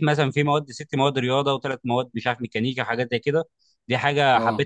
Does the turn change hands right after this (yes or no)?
no